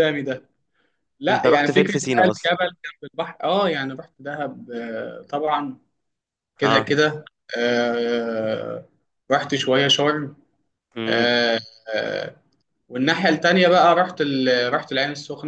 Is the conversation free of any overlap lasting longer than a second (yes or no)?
no